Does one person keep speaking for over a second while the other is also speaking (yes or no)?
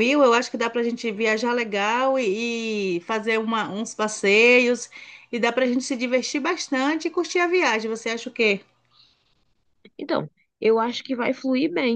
no